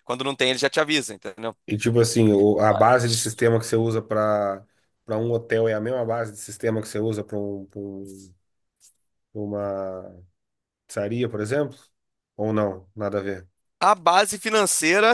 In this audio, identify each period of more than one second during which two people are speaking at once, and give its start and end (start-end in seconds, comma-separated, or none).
none